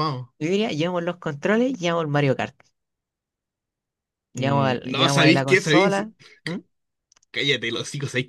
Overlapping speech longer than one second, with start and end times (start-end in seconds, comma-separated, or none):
4.3-6.0